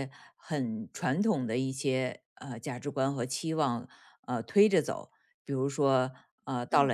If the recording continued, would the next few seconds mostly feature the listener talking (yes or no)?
no